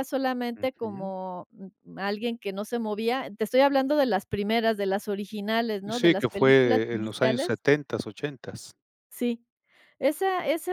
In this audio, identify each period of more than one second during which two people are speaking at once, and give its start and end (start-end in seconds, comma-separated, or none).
5.8-7.6